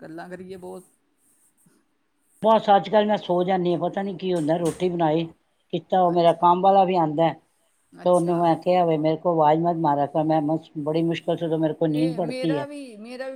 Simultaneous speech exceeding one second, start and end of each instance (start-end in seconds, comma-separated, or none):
none